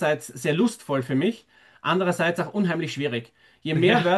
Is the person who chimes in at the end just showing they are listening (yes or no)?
yes